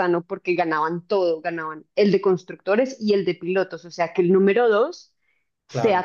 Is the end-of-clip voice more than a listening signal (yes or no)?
no